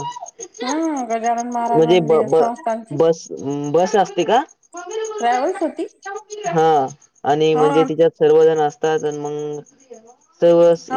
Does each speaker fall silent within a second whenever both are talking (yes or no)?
yes